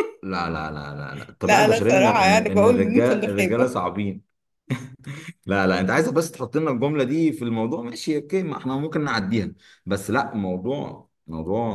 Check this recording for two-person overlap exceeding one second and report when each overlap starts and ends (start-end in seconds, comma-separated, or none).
1.4-3.7